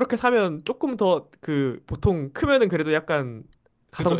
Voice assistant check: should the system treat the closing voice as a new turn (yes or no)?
yes